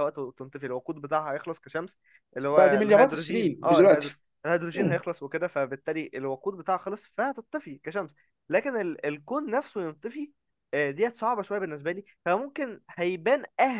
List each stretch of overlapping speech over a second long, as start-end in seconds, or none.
2.5-4.1